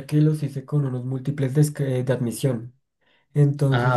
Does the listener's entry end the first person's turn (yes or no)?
no